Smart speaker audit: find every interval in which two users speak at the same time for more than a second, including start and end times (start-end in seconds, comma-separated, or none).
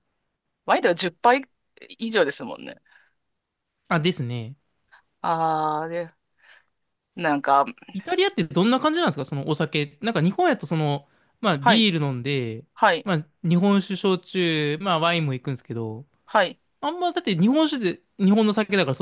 none